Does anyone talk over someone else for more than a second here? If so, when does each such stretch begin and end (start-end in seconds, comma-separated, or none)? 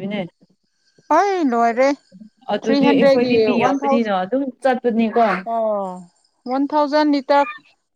2.6-4.2